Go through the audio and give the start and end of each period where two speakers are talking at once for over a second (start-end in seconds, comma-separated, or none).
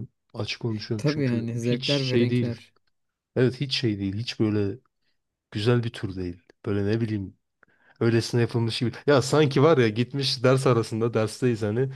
1.0-2.6